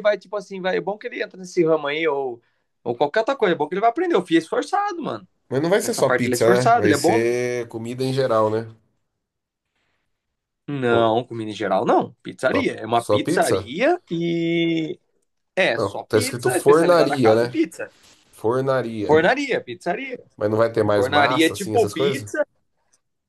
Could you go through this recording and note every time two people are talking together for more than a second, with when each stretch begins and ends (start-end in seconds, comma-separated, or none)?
5.8-7.4, 12.5-13.7, 15.7-17.6, 20.9-22.3